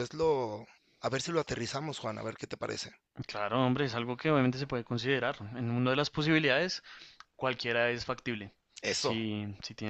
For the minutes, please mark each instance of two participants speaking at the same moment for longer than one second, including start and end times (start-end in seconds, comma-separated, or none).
none